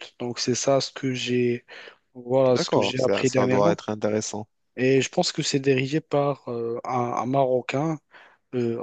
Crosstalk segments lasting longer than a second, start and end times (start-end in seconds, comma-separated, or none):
2.5-3.8